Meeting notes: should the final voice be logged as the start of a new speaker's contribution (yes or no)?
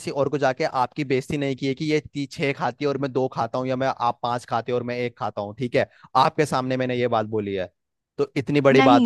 yes